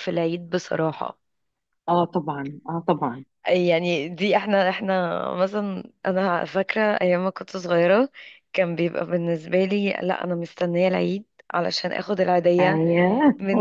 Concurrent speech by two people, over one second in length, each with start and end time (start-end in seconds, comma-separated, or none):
none